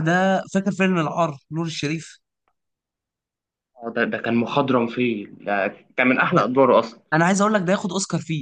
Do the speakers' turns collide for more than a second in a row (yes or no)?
no